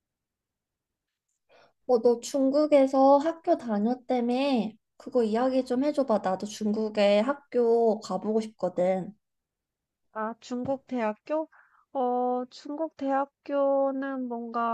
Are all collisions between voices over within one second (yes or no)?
yes